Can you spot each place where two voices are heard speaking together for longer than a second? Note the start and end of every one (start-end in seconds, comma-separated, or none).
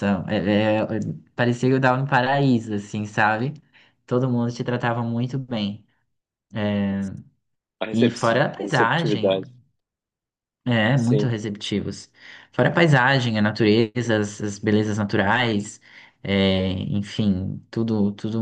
7.9-9.4